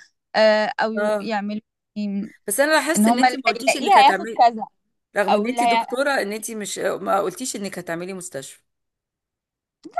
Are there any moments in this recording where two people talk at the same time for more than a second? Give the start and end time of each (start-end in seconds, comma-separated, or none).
3.0-4.4